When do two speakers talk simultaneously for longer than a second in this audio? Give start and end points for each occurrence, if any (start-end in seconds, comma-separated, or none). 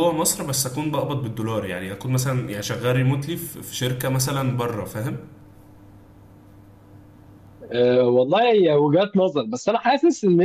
none